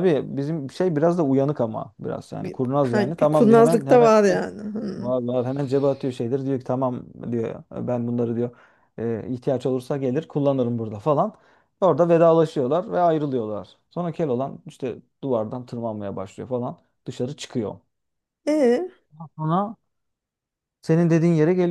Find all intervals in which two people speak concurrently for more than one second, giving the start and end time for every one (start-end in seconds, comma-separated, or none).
2.4-4.1